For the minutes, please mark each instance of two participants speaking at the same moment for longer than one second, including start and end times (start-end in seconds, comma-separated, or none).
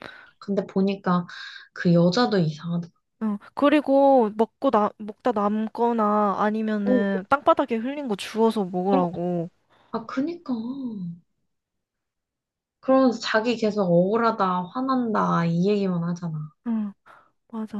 none